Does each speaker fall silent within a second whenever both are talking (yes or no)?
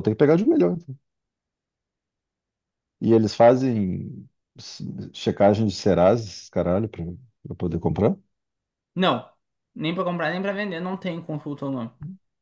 yes